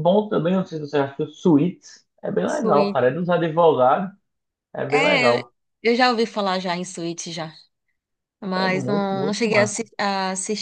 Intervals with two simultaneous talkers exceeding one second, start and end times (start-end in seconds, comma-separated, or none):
8.6-9.8